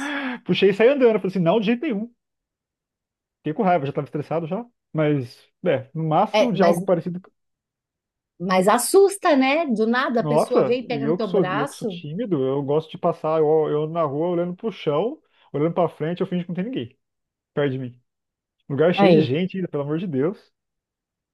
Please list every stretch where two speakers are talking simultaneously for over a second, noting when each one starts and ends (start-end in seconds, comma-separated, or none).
10.2-12.0